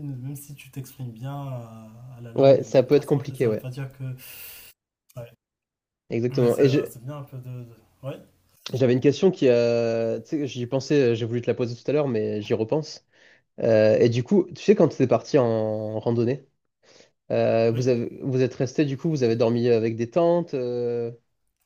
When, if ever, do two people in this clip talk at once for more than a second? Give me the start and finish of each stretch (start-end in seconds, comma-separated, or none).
2.4-3.7